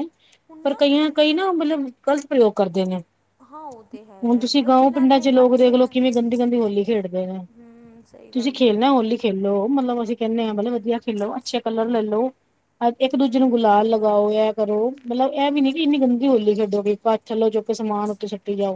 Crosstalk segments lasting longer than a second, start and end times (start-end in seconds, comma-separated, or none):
4.2-6.0, 13.1-14.4